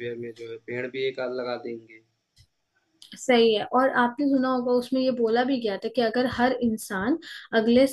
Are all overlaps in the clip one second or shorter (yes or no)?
yes